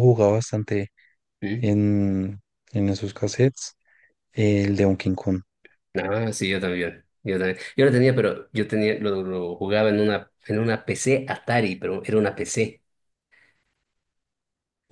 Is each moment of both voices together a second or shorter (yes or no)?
yes